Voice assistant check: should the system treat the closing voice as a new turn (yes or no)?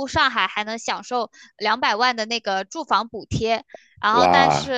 yes